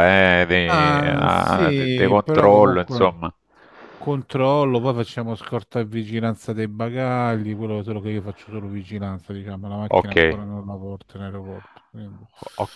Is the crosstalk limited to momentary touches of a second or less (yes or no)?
no